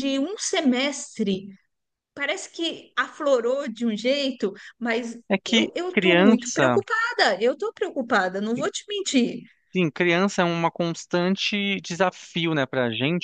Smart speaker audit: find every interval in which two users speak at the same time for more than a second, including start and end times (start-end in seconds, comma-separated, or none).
5.3-6.8